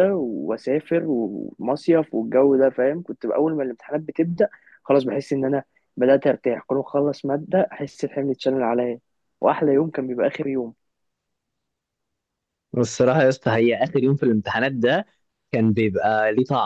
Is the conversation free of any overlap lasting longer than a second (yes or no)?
yes